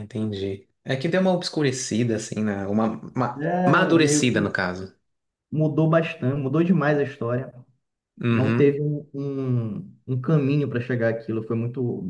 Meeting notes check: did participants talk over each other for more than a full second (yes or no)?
yes